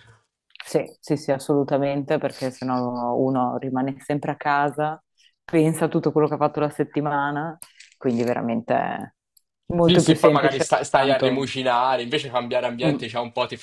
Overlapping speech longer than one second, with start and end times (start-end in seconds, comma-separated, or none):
9.8-11.5